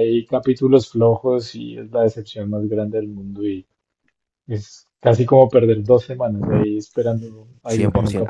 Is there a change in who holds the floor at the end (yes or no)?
yes